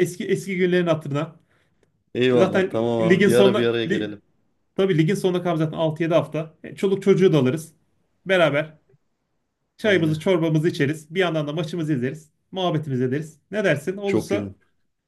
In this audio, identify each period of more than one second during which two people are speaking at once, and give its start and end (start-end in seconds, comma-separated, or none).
2.3-4.2